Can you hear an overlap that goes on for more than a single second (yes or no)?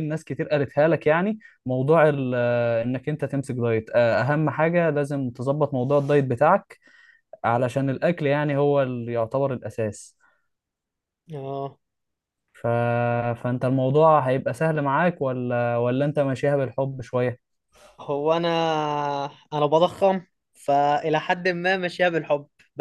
no